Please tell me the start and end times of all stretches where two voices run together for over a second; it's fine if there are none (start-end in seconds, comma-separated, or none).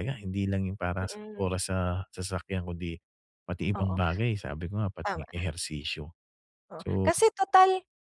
none